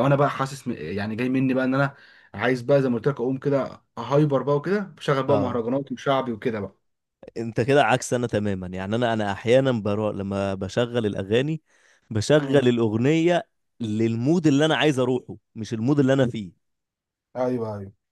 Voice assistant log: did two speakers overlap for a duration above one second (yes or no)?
no